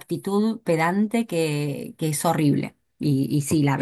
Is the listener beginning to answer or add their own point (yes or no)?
no